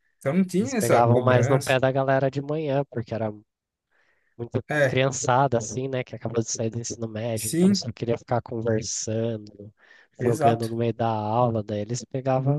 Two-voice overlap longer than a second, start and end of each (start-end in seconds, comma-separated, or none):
0.6-1.8